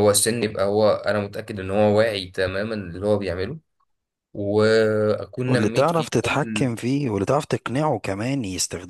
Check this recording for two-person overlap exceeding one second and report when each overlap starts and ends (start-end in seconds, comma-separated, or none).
5.5-6.7